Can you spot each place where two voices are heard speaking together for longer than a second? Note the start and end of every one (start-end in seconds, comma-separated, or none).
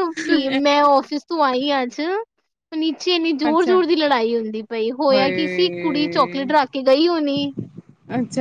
5.1-6.5